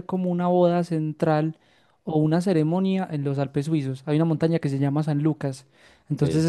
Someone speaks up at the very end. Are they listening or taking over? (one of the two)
listening